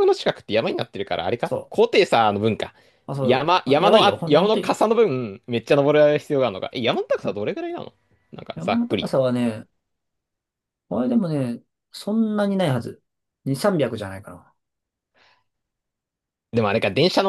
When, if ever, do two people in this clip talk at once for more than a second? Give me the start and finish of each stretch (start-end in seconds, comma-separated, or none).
3.2-4.8